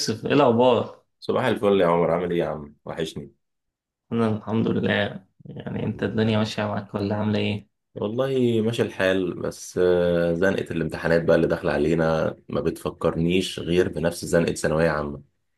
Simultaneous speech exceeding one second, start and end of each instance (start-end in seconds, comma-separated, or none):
none